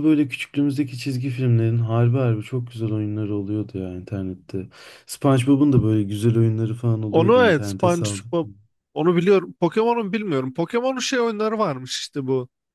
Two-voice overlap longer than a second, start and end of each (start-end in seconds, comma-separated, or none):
7.1-8.3